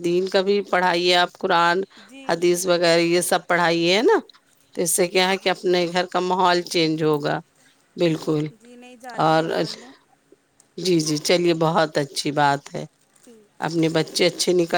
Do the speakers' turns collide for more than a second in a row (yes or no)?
no